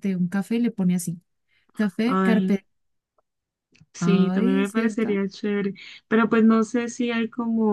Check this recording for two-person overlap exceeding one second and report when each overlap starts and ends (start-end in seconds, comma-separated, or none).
4.0-5.2